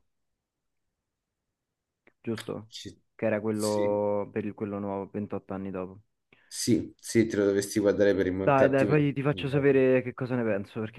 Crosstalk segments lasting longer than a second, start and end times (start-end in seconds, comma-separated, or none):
8.4-9.8